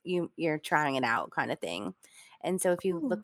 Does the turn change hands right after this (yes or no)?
no